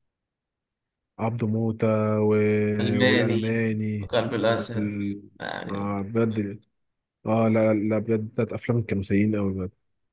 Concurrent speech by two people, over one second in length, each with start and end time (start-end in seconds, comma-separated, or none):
3.0-5.0